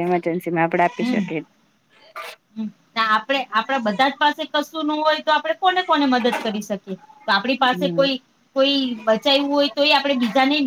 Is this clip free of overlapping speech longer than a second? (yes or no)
yes